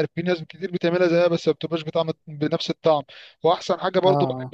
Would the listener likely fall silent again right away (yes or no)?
yes